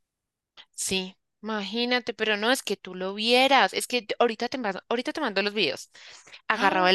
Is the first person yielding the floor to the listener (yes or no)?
no